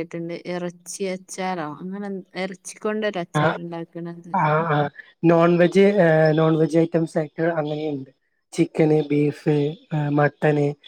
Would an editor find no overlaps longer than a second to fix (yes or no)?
yes